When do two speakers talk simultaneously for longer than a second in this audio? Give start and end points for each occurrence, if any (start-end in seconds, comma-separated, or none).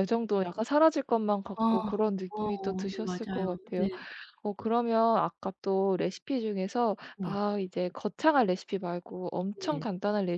2.3-3.9